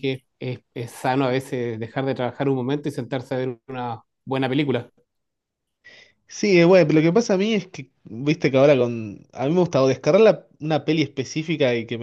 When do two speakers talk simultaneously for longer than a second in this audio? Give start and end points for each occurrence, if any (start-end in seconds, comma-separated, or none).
none